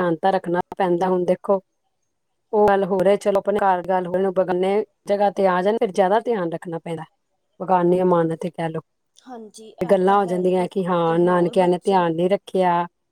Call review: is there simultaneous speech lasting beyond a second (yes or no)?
yes